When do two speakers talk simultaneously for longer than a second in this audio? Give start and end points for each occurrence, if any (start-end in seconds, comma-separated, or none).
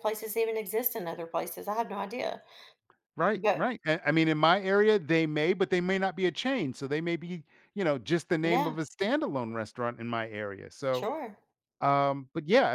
none